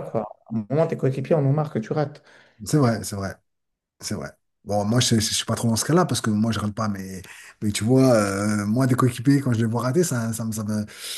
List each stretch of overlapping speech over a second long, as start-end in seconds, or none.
none